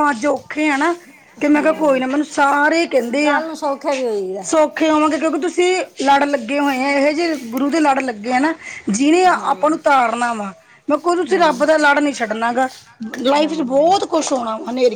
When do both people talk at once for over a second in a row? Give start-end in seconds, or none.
none